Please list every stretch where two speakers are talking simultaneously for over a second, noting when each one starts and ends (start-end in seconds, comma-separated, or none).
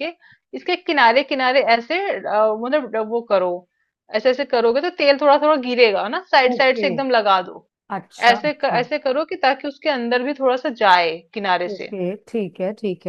none